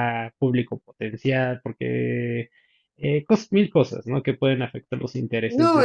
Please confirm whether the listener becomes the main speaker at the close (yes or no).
yes